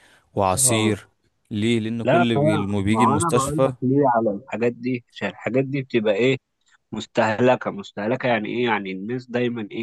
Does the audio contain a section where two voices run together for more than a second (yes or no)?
yes